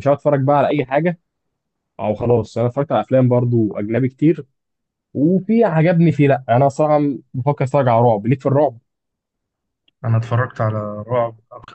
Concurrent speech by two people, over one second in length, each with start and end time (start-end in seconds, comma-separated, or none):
none